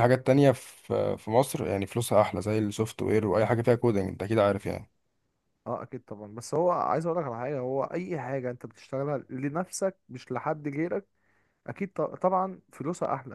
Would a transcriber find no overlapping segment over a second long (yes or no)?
yes